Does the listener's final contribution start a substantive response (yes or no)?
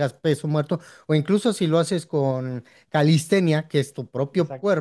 no